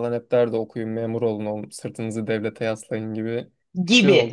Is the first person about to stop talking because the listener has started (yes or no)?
yes